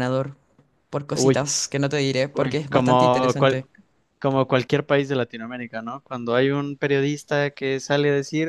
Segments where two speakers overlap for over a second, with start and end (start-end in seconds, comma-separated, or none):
2.3-3.6